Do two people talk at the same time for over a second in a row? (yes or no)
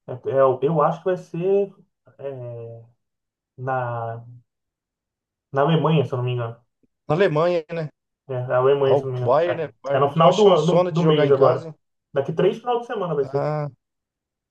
yes